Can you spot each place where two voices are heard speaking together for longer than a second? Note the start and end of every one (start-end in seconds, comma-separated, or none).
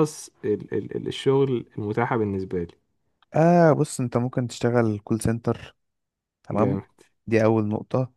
none